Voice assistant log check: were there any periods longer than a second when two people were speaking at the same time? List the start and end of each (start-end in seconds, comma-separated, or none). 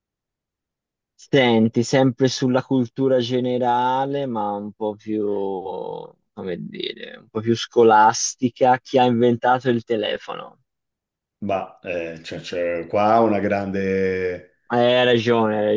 none